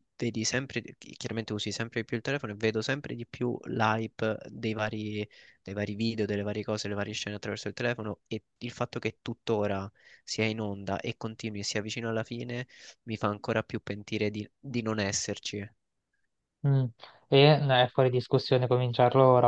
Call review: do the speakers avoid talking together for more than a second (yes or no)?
yes